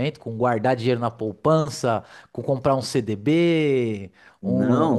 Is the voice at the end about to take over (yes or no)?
yes